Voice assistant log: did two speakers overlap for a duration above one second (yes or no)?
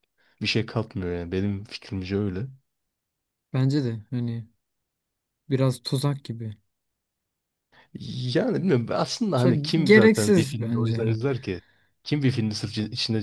yes